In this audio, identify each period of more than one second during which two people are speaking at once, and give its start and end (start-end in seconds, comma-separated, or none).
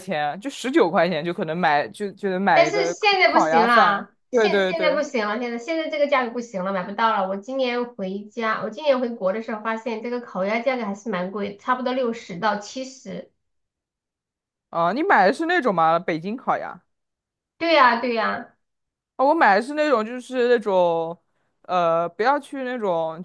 2.5-5.0